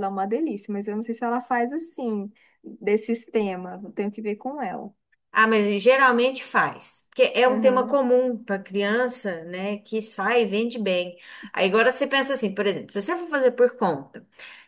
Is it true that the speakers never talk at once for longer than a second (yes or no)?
yes